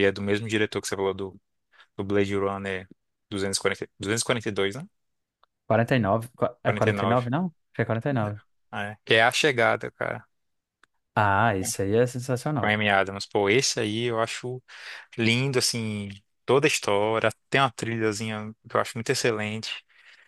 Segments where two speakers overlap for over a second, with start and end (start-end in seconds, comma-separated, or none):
none